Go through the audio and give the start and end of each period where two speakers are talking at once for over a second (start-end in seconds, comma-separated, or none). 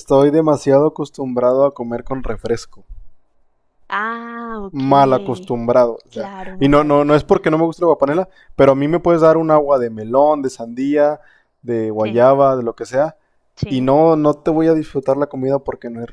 6.1-7.4